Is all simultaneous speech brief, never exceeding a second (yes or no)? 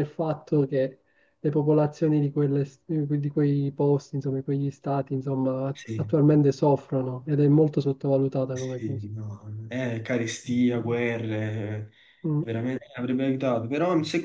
yes